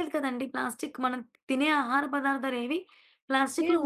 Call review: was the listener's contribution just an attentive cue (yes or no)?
no